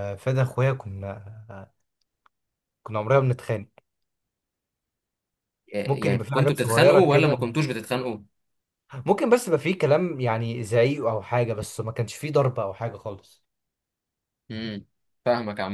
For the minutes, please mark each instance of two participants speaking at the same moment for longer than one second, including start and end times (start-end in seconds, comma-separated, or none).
5.8-7.5